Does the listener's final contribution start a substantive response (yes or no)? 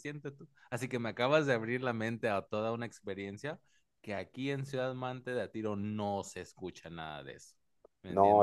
yes